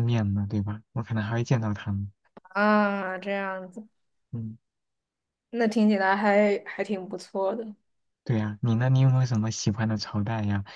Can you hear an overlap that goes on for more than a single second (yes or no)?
no